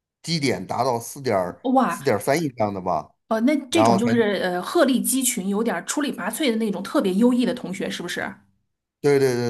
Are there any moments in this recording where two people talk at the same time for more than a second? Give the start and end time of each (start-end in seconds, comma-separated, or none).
none